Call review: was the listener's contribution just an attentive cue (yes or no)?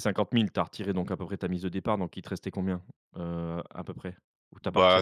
no